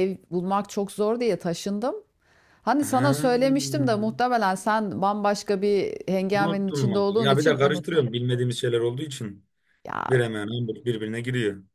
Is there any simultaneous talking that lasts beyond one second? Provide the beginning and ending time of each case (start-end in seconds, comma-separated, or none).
6.3-8.1